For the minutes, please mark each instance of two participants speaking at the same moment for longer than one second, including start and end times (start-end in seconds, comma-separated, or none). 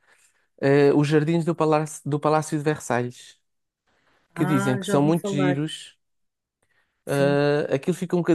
4.3-5.6